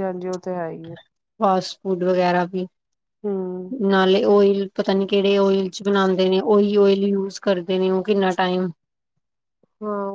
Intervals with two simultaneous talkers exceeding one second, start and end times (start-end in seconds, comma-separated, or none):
none